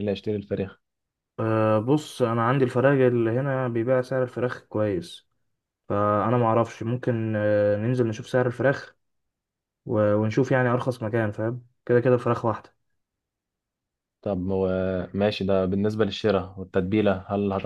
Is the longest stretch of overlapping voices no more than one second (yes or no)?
yes